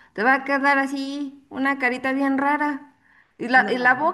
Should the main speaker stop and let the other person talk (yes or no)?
no